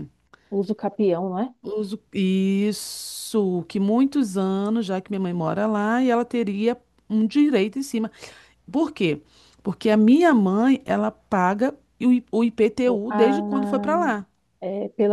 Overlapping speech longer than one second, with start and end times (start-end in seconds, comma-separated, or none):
none